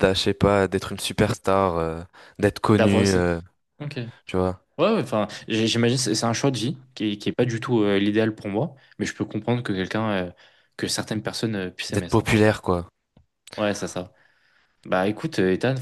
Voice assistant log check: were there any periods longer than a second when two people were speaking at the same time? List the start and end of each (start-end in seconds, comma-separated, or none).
none